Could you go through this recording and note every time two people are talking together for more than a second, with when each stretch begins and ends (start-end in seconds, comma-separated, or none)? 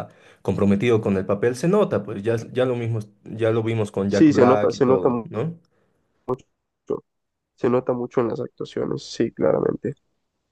4.1-5.3